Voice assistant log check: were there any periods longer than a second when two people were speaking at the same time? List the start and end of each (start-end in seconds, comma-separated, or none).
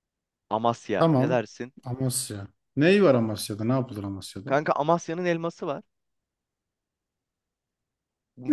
none